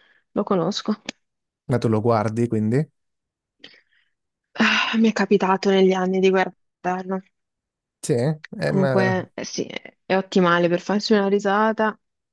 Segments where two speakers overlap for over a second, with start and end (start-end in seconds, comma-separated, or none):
none